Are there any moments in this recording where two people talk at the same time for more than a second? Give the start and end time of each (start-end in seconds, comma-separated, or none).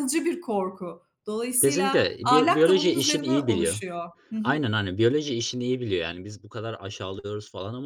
1.6-3.8